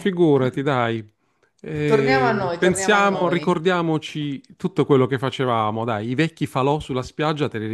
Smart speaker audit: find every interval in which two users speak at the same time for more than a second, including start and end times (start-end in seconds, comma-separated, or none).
1.9-3.6